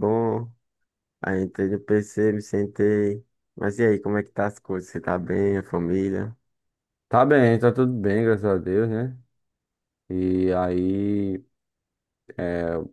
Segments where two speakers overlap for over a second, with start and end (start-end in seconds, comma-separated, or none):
none